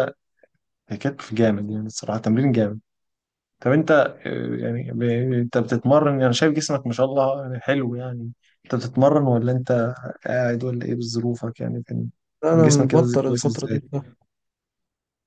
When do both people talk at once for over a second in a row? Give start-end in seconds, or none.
12.5-13.8